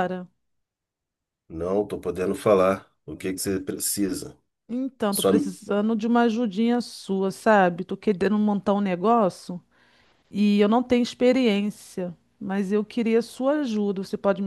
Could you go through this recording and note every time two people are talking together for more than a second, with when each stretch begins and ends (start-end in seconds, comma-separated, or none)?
none